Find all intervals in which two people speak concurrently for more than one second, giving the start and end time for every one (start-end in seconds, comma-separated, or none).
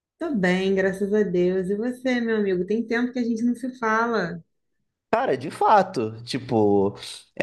none